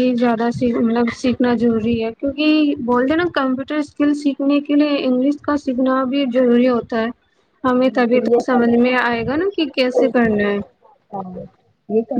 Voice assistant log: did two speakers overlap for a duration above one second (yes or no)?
yes